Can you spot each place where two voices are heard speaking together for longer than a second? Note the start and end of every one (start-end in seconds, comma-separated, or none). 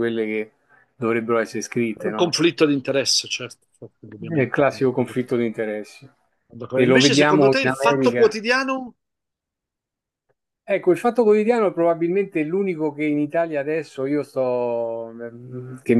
4.3-5.5, 6.7-8.4